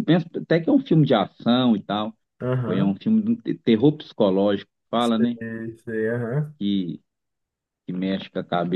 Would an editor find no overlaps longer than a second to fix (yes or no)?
yes